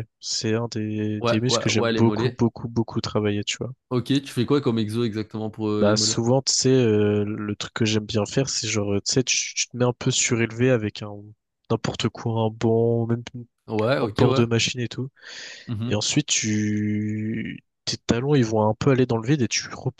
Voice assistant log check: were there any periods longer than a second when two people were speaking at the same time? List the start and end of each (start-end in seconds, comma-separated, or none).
1.2-2.4